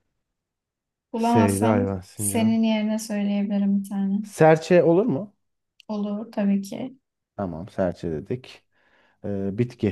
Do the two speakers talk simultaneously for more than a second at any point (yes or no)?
yes